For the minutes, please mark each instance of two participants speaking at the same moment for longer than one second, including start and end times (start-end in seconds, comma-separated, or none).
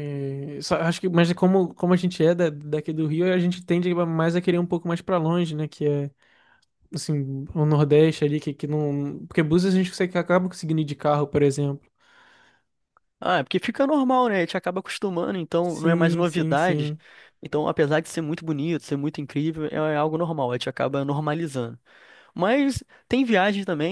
15.6-16.9